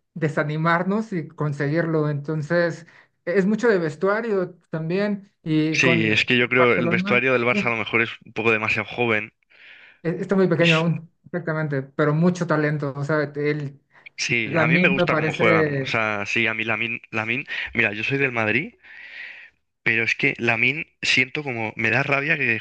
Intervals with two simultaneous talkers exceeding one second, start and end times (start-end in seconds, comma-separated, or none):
5.7-7.2, 14.4-16.0